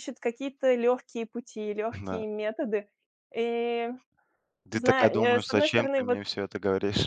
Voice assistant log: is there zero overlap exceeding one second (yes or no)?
no